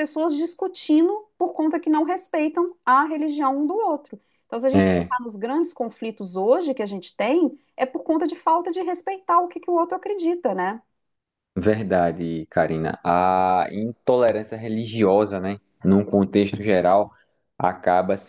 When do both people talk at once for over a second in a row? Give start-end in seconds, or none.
none